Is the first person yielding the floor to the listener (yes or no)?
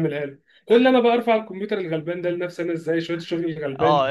yes